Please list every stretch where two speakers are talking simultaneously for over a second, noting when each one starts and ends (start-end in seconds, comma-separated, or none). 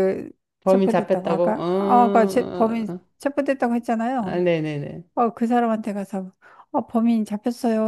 0.7-3.0